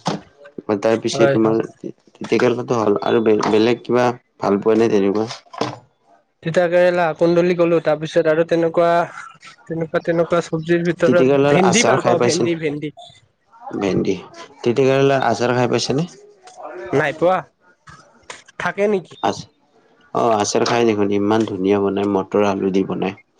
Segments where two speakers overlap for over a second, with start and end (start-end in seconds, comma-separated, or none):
11.0-12.5